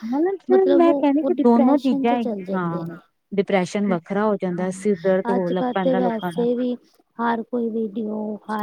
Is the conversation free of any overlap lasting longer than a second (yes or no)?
no